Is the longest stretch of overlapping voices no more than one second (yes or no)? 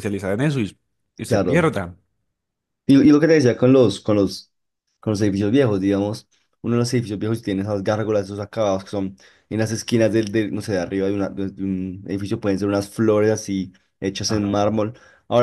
yes